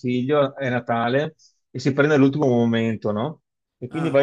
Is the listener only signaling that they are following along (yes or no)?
yes